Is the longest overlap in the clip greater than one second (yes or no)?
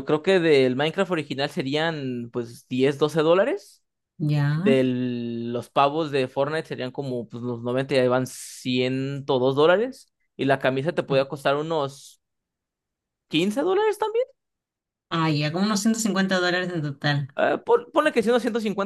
no